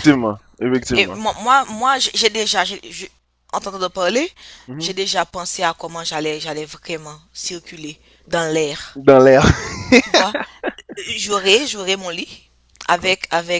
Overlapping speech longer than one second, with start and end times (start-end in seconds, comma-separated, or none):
none